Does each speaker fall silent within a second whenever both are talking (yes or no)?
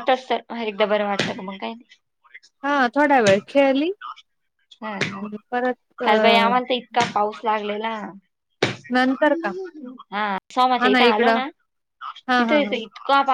yes